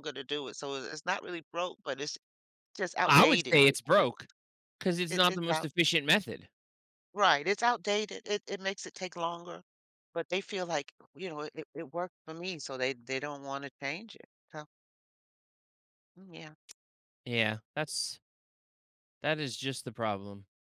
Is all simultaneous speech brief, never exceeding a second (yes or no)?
no